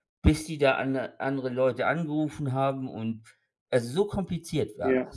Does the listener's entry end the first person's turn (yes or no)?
yes